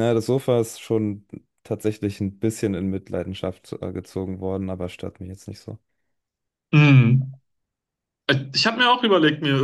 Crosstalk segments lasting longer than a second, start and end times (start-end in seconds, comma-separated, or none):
none